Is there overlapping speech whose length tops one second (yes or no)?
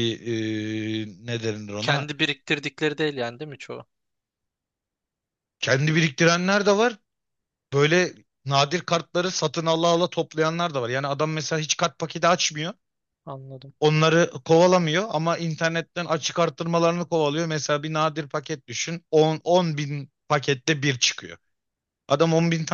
no